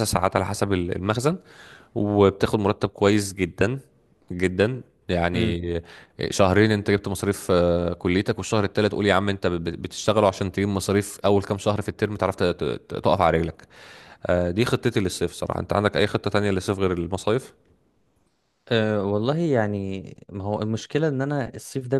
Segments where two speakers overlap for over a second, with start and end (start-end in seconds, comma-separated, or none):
none